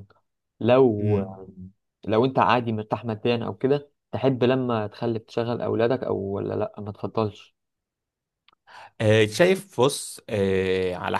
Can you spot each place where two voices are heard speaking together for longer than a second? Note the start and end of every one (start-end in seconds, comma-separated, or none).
none